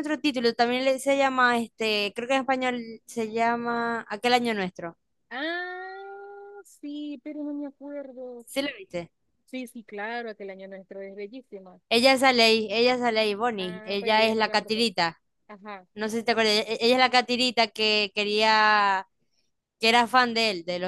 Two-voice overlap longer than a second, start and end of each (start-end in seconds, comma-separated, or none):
13.6-14.9